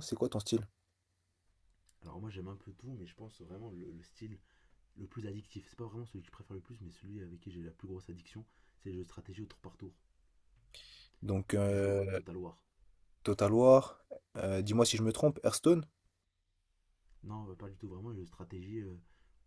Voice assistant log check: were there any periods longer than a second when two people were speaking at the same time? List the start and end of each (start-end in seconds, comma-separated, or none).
none